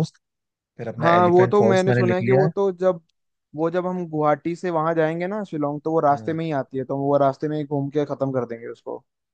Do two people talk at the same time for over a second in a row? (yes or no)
yes